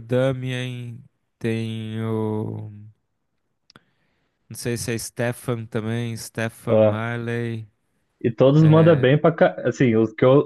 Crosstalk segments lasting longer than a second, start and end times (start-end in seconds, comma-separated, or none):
none